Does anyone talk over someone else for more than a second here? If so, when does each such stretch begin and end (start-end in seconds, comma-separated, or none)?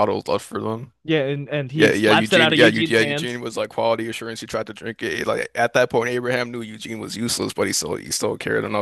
1.7-3.4